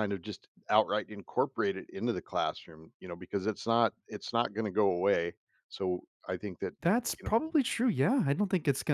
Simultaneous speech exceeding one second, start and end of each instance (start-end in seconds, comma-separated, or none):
none